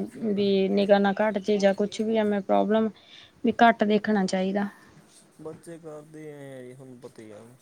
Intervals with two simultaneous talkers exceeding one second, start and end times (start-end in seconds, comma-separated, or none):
none